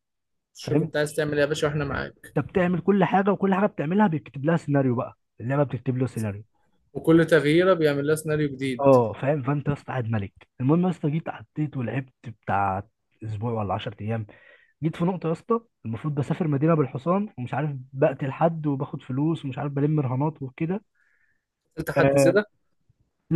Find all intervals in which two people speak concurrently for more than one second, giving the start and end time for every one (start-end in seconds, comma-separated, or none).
none